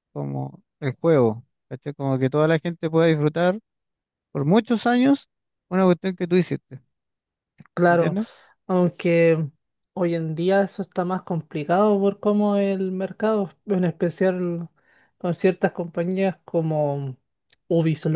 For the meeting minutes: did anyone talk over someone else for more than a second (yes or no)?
no